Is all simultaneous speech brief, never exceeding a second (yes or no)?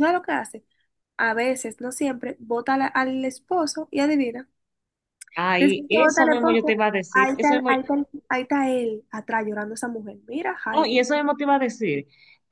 no